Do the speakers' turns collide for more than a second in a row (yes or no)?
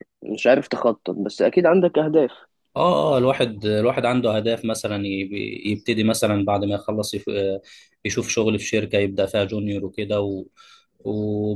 no